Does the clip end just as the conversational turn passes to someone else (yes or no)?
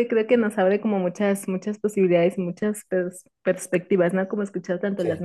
no